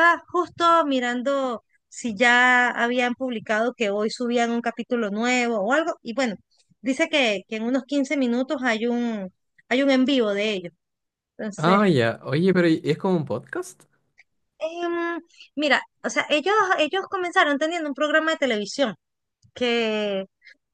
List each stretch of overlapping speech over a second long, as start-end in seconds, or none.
none